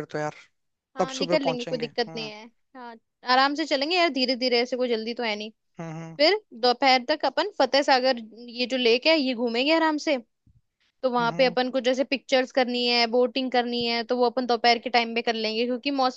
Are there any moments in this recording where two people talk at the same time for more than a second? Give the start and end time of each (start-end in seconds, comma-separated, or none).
1.0-2.3